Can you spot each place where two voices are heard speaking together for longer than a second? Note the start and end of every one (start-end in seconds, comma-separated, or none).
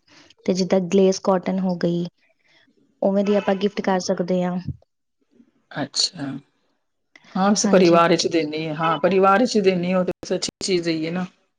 none